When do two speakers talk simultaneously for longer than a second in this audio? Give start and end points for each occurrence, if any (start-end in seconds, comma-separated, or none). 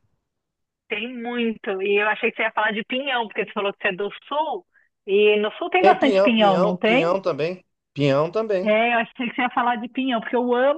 5.8-7.2